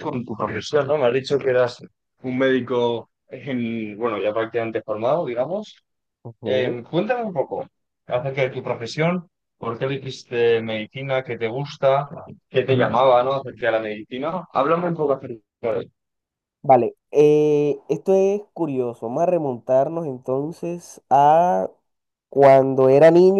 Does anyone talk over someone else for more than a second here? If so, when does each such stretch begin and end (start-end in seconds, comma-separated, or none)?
none